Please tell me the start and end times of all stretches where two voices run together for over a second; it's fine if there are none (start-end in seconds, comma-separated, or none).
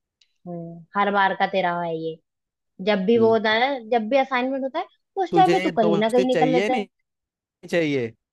5.3-6.8